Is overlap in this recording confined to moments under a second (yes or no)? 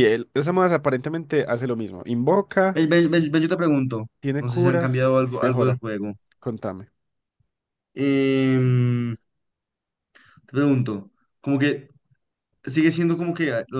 no